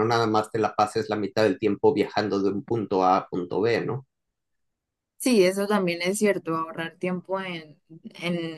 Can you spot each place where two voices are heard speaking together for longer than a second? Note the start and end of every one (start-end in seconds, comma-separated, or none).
none